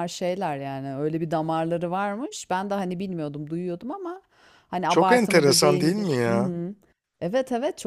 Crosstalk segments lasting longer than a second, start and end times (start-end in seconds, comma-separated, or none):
4.9-6.5